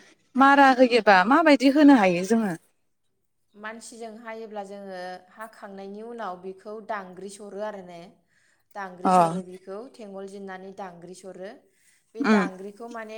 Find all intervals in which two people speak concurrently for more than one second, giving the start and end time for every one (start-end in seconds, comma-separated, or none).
none